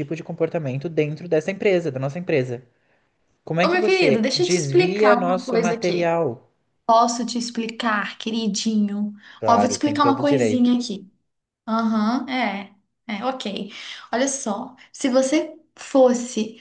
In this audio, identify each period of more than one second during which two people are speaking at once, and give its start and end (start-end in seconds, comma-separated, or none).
3.6-6.1, 9.4-10.7